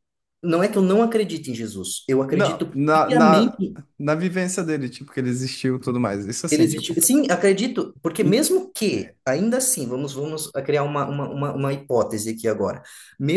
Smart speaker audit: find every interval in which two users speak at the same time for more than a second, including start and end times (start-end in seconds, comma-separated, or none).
2.3-3.6